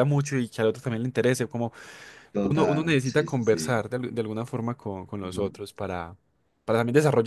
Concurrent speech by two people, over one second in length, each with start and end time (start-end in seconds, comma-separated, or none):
2.4-3.8